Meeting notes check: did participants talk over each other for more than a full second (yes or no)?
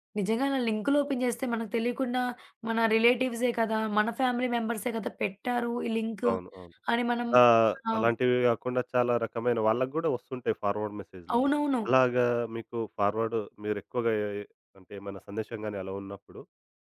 no